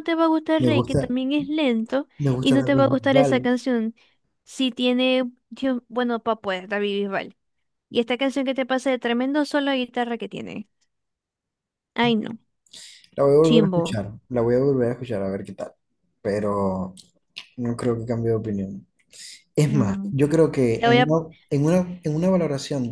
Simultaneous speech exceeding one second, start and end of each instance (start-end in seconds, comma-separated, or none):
2.2-3.5